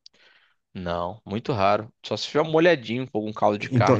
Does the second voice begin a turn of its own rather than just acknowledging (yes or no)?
yes